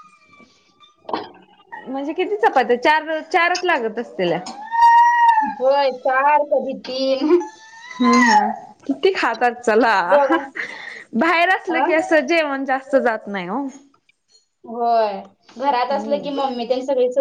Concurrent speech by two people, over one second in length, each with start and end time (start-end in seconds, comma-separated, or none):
none